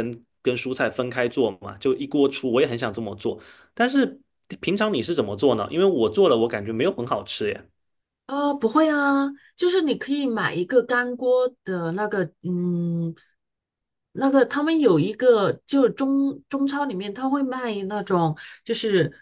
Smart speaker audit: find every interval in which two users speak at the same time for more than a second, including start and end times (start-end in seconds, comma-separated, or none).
none